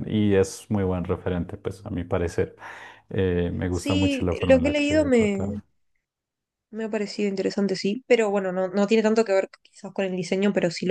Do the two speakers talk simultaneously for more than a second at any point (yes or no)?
yes